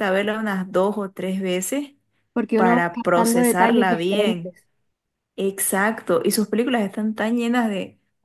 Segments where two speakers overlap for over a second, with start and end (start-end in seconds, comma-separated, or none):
2.5-4.5